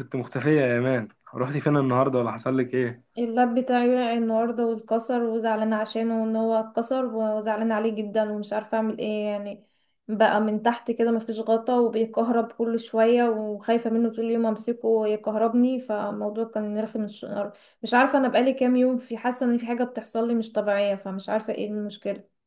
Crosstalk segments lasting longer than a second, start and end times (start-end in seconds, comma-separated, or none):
none